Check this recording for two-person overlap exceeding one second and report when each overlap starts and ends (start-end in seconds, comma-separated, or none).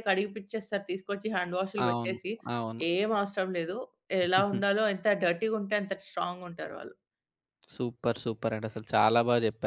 none